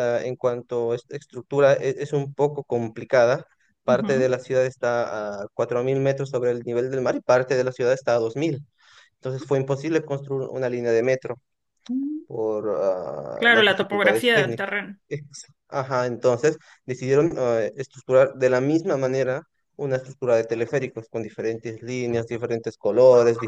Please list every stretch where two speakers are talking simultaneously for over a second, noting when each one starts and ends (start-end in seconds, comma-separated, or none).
13.3-14.7